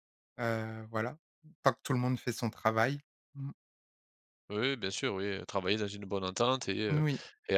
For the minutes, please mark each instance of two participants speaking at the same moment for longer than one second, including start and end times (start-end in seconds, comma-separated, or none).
none